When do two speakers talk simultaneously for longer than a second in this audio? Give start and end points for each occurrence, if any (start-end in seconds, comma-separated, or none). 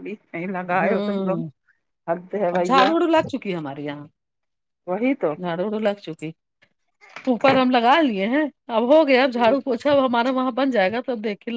none